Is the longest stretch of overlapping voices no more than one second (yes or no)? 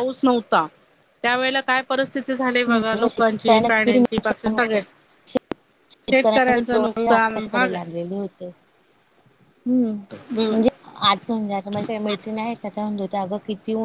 no